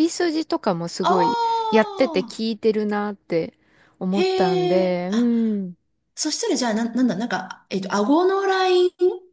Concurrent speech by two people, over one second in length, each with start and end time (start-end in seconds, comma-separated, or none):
1.0-2.4, 4.1-5.3